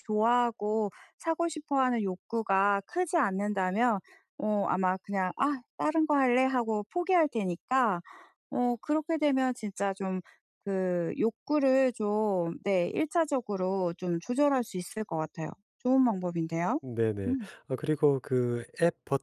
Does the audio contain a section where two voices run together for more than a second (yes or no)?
no